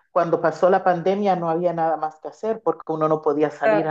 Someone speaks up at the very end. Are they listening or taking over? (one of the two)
listening